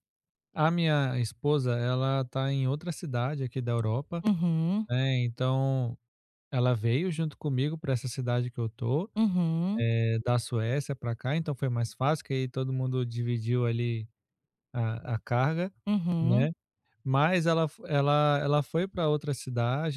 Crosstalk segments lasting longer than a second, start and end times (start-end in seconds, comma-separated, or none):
none